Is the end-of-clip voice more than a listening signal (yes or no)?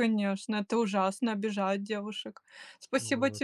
no